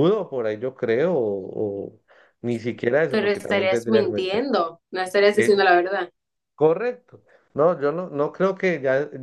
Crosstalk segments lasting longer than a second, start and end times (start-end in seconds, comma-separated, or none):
3.1-4.5